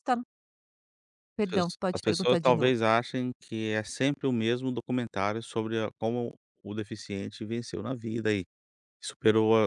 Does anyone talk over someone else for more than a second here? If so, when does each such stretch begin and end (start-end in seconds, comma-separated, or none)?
1.4-2.8